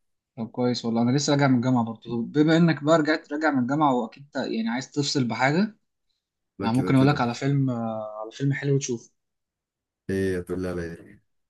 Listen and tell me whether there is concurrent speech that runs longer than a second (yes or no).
no